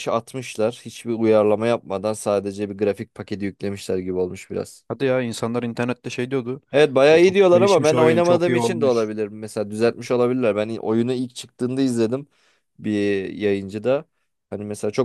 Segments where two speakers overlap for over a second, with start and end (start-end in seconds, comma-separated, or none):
7.1-9.1